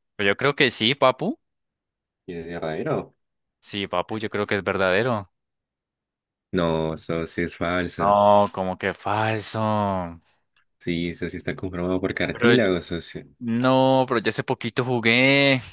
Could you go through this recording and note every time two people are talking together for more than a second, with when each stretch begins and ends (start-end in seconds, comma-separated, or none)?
none